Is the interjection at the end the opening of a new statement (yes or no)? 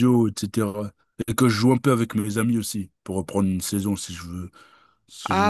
yes